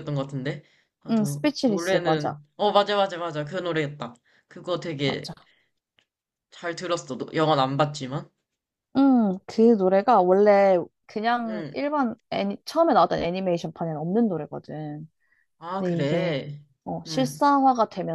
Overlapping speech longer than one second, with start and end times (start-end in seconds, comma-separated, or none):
1.1-2.4